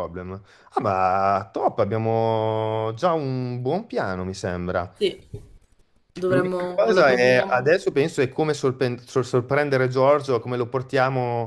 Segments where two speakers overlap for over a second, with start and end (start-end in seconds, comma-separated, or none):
6.2-7.8